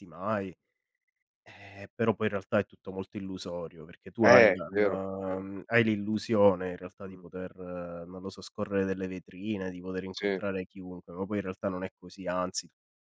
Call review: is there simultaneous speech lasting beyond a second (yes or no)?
no